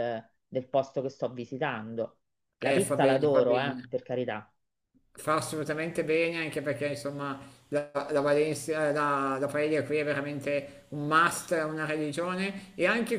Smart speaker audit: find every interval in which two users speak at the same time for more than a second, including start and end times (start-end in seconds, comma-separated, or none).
2.6-3.8